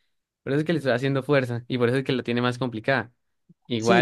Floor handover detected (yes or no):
yes